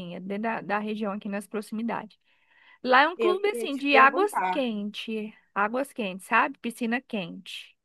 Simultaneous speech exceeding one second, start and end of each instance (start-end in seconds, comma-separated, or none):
3.2-4.7